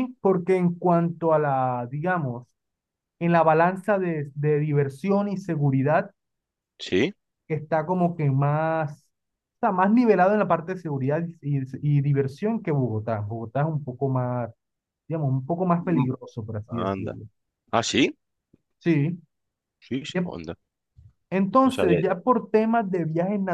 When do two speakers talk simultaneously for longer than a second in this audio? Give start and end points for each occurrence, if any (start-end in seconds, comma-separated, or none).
none